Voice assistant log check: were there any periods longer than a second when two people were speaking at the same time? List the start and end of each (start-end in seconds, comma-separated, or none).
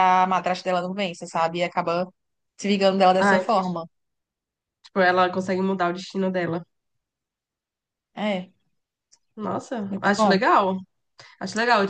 none